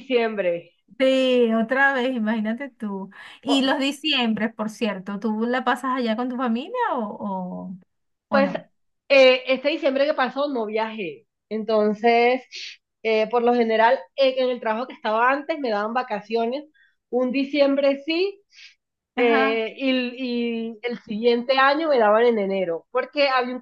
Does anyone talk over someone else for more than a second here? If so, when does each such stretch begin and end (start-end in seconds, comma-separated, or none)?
none